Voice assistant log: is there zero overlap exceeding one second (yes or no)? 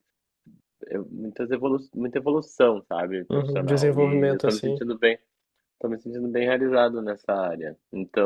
no